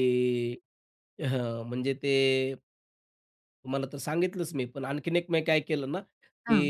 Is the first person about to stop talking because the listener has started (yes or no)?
no